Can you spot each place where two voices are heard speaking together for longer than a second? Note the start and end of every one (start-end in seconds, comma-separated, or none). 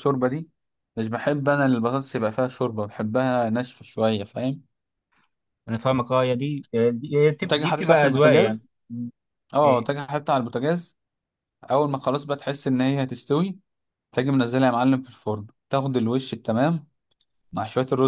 7.4-8.7